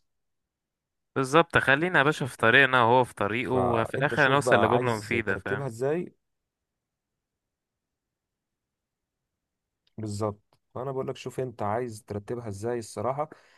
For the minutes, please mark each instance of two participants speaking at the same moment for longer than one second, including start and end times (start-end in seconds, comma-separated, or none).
3.4-5.7